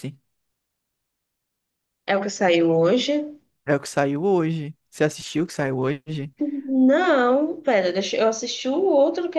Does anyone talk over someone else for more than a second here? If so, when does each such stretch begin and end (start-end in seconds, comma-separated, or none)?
none